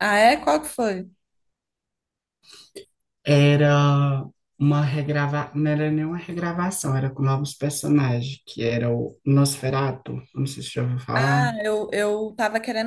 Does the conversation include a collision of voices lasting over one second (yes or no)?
no